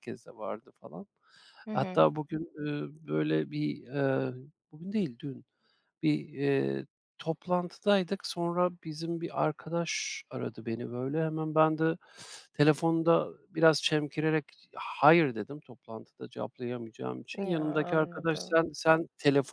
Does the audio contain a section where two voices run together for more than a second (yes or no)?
yes